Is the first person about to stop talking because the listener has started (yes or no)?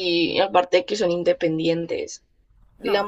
no